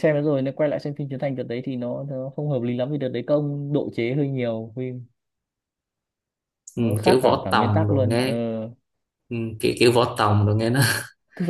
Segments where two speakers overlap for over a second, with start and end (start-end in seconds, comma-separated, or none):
6.8-8.3